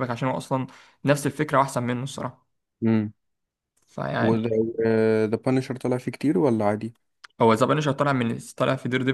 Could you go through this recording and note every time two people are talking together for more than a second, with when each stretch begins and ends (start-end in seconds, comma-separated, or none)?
none